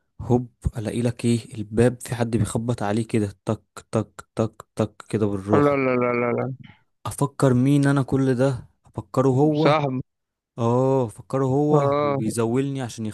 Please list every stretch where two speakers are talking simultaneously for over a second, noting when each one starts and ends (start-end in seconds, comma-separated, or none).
none